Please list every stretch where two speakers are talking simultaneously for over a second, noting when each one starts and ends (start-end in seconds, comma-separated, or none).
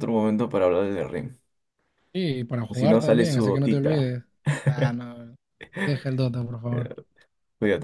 2.6-4.1